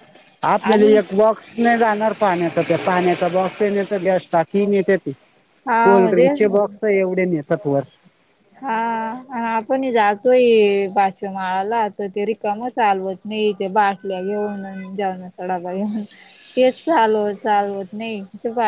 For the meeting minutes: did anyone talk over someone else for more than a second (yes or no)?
no